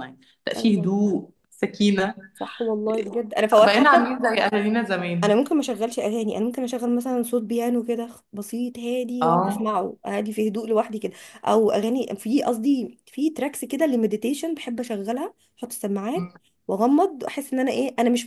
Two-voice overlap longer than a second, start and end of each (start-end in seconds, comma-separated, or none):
none